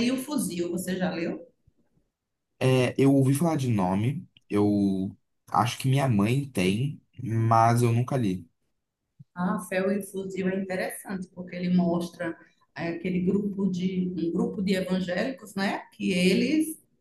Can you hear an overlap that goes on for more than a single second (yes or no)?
no